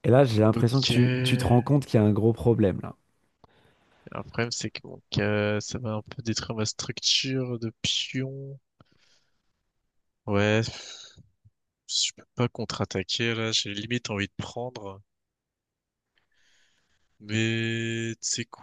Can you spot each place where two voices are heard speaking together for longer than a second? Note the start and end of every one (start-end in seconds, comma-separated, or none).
0.5-1.7